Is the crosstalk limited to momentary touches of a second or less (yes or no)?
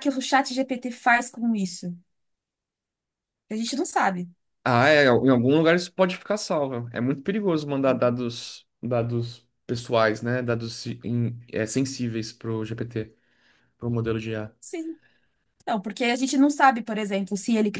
yes